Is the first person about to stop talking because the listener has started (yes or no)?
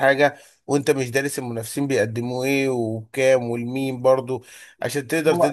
no